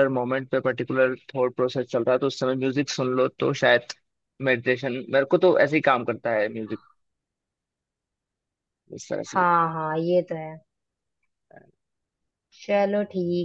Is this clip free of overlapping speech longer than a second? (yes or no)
yes